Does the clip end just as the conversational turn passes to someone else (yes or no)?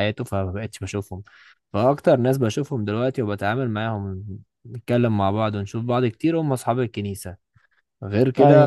no